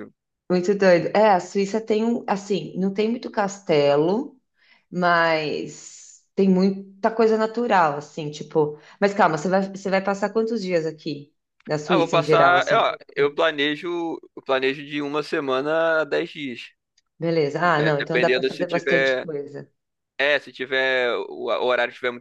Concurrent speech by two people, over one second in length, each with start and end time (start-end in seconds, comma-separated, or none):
11.9-13.4, 17.8-19.3